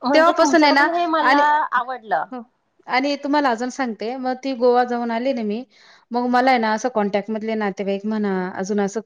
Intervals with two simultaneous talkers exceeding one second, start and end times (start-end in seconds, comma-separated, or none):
none